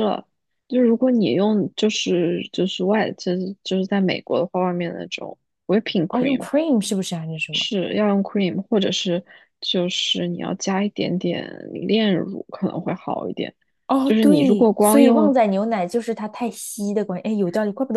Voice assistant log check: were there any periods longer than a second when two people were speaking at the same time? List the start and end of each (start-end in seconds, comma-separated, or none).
14.0-15.3